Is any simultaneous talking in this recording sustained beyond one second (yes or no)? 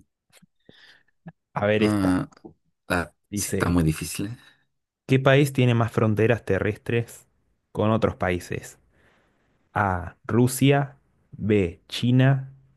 no